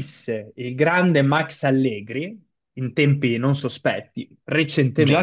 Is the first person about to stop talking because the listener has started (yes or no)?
yes